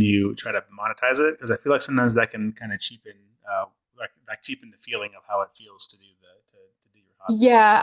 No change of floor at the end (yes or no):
no